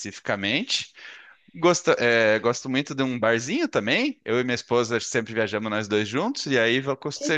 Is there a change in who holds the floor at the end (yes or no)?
no